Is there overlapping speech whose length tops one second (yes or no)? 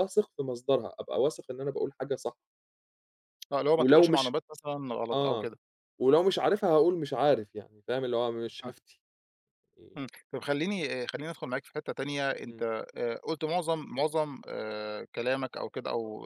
no